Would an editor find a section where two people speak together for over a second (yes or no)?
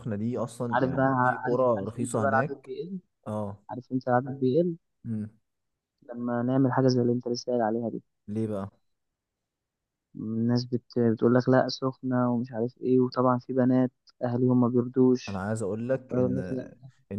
yes